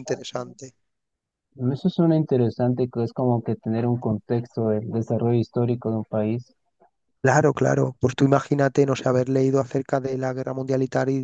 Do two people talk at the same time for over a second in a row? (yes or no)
no